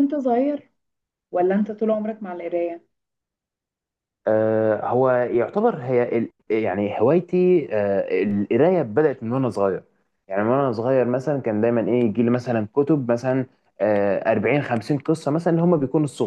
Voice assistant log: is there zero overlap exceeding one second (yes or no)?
yes